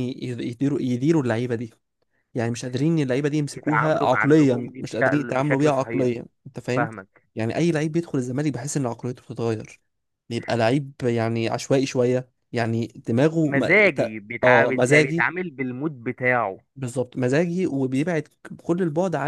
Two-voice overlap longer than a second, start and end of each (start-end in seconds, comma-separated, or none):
3.5-6.1, 13.4-15.3